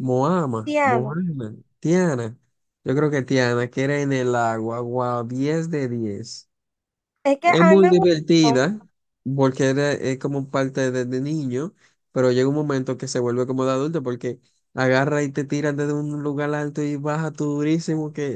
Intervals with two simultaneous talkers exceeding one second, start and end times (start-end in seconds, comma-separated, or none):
7.4-8.7